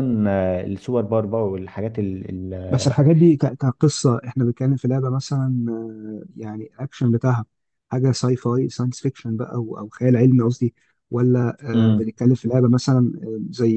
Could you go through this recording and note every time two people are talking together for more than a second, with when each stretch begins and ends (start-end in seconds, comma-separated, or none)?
none